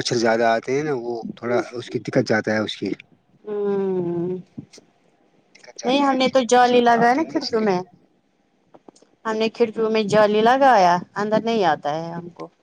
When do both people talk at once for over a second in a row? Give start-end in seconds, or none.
5.8-7.8